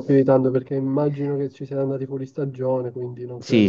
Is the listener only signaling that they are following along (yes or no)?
no